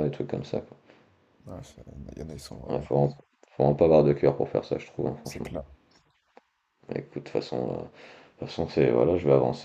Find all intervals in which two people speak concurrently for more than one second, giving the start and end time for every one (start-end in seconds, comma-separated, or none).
none